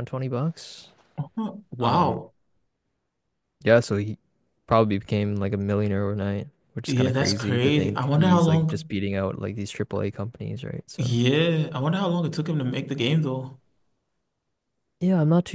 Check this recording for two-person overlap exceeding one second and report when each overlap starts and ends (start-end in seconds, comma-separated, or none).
6.9-8.9